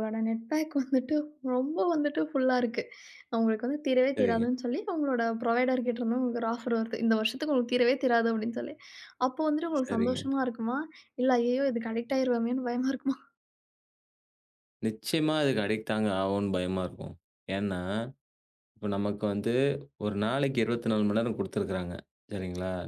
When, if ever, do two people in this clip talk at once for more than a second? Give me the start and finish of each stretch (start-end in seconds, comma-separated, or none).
none